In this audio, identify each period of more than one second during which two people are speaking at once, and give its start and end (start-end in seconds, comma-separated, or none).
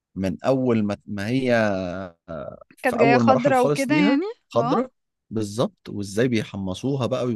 2.8-4.8